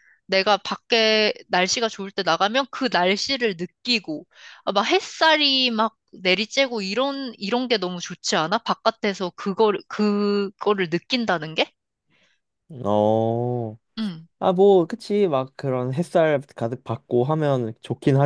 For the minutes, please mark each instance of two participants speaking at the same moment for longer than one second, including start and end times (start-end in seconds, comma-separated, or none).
none